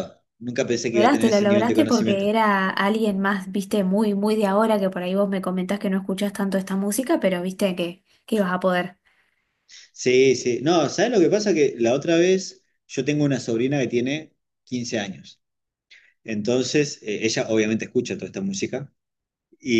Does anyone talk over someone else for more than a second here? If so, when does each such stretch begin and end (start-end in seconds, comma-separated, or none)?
0.9-2.3